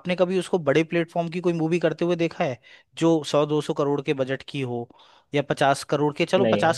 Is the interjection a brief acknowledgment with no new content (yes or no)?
yes